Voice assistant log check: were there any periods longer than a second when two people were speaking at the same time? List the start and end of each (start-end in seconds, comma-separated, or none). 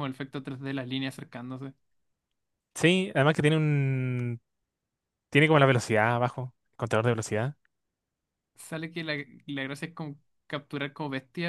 none